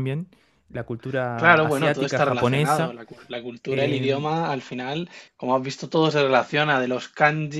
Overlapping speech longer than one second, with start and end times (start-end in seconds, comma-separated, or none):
1.4-3.0